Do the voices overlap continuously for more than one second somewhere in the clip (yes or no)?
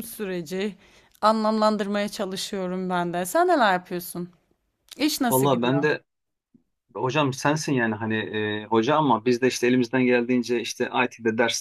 no